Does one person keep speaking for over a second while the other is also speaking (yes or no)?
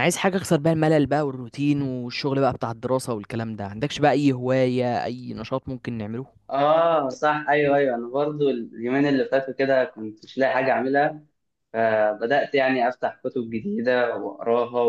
no